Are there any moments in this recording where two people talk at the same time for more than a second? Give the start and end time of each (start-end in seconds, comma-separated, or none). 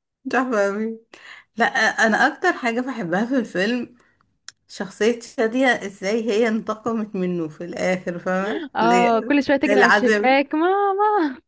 8.8-10.4